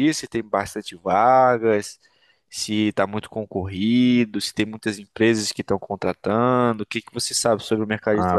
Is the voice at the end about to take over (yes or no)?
yes